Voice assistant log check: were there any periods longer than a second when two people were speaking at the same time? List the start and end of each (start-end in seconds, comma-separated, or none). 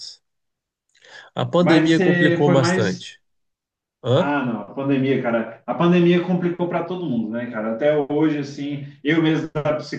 1.6-3.1